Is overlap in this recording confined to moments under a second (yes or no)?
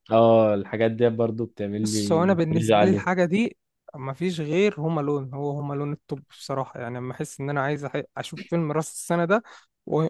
no